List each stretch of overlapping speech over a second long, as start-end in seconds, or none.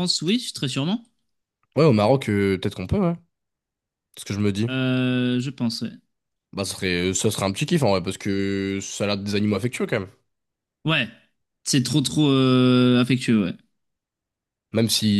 none